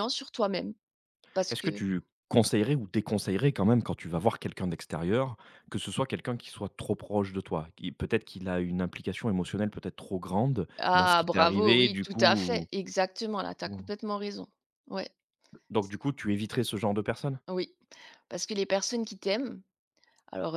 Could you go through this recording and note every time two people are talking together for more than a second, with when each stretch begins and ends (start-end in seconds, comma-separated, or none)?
10.8-12.7